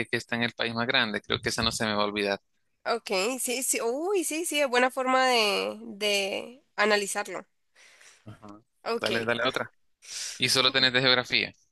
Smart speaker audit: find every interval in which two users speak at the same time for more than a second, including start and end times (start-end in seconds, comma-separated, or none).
none